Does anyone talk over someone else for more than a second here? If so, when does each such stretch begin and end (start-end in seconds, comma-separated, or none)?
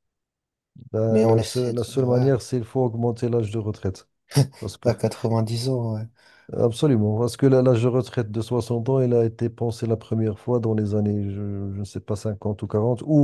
1.1-2.3